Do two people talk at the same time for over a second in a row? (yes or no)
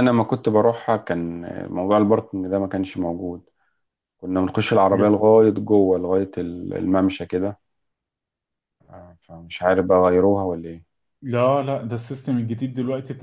no